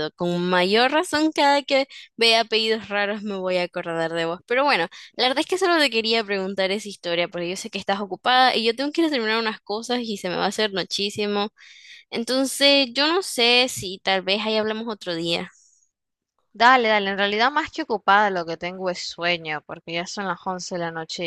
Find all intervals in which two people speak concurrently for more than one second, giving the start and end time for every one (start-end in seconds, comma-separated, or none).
none